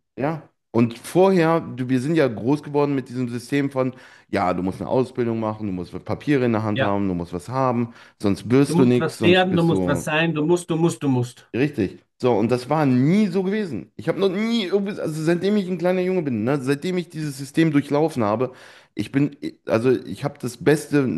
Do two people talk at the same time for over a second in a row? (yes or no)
yes